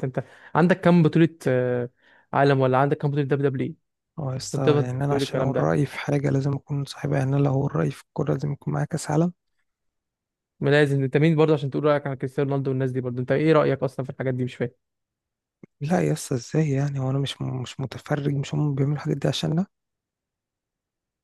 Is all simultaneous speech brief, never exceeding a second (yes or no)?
no